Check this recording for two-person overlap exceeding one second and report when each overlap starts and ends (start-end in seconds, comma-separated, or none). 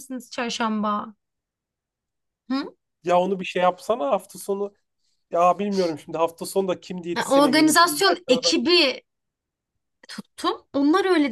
7.2-8.5